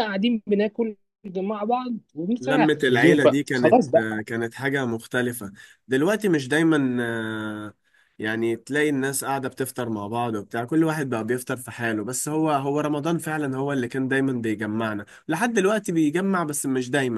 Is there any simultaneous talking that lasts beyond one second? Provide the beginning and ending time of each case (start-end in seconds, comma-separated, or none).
2.4-3.8